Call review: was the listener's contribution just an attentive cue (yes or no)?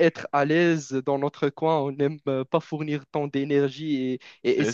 yes